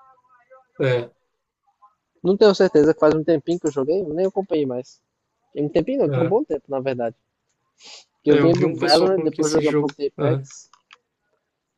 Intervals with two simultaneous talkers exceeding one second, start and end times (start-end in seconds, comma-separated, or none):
8.3-10.4